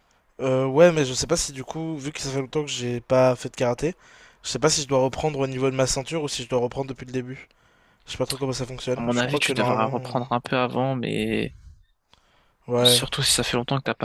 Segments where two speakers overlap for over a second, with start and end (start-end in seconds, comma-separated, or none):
8.9-10.2